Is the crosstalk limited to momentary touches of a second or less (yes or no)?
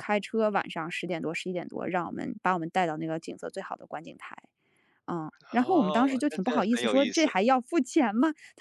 no